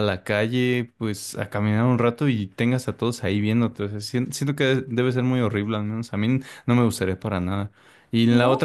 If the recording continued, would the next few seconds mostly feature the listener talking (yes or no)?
no